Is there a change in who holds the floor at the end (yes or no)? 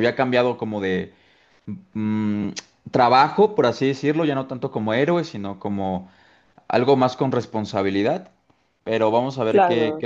no